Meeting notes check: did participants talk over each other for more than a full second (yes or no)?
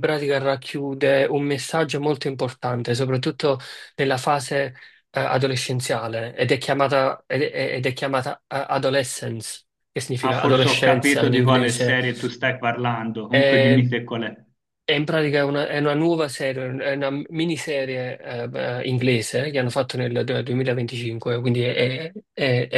yes